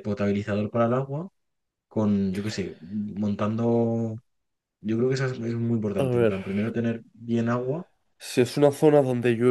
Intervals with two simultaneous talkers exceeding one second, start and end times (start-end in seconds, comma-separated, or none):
none